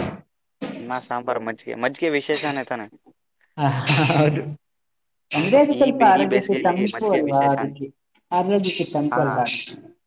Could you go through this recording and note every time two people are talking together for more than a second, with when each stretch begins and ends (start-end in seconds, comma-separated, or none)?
5.4-7.7